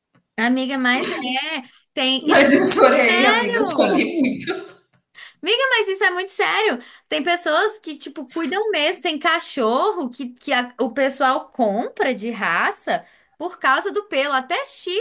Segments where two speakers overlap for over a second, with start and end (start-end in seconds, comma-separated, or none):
2.2-4.1